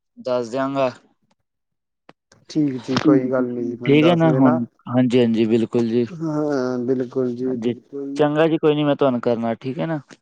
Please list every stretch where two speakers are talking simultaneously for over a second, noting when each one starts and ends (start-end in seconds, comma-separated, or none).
3.0-4.6